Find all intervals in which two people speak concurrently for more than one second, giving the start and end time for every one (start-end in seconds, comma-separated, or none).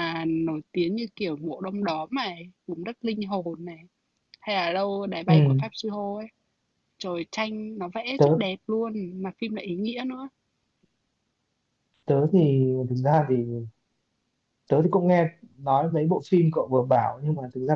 none